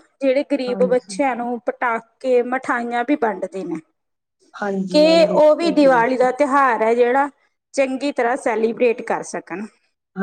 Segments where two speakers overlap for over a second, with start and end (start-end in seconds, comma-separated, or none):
4.9-6.3